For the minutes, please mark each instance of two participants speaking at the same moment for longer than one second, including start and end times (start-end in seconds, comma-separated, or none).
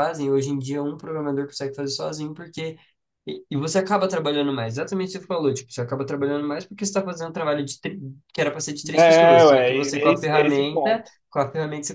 8.9-11.0